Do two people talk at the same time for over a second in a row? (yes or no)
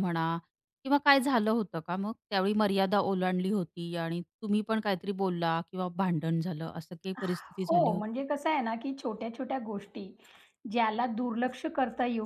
no